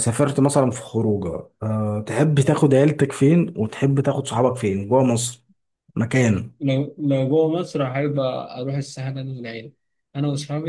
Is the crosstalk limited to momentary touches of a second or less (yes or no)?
yes